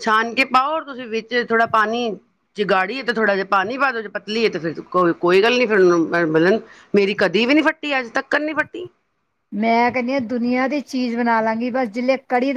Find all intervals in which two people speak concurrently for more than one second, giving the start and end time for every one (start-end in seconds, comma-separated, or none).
none